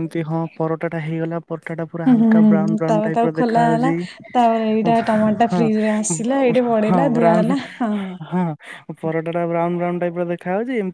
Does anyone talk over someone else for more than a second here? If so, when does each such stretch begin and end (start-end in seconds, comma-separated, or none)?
2.1-4.0